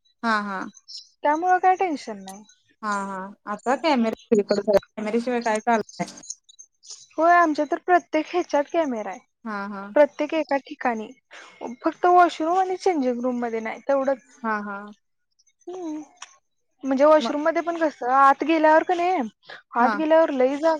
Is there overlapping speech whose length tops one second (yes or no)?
no